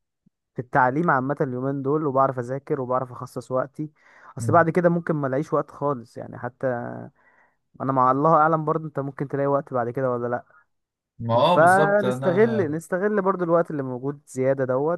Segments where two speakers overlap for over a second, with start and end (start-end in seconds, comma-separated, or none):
11.4-12.7